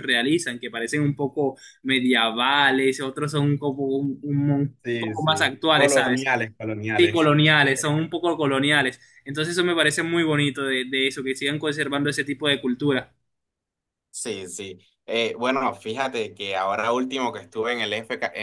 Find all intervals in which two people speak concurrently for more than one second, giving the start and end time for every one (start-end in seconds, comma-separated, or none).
4.8-6.3